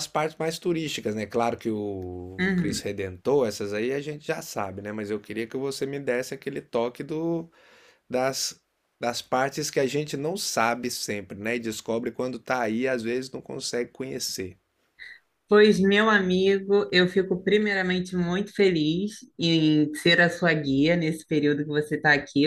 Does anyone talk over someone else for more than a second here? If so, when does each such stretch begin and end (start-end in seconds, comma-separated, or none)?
none